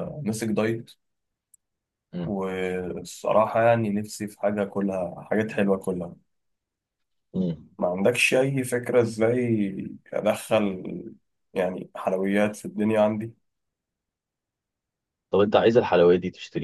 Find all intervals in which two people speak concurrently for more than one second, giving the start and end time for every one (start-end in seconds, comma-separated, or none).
none